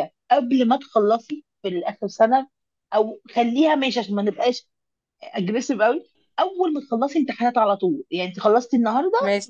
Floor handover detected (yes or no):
no